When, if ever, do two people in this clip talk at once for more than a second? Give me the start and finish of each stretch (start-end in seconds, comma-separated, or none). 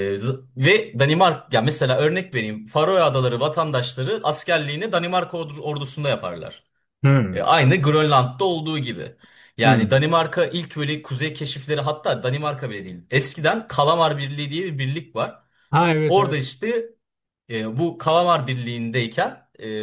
none